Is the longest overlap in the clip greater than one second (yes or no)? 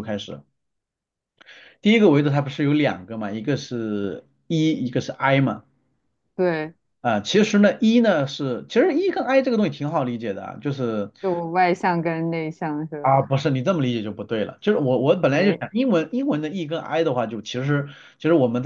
no